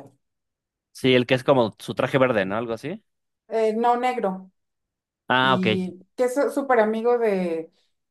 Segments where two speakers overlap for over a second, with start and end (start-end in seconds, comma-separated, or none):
none